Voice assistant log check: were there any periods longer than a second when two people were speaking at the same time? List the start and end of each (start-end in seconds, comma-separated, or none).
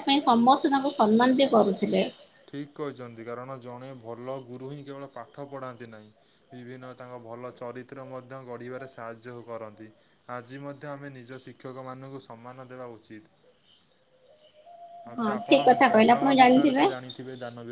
15.2-16.8